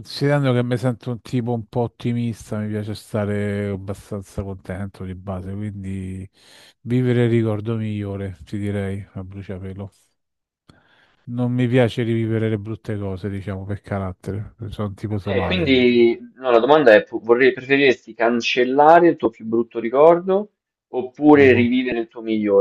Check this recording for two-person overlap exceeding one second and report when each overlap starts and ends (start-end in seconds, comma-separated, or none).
none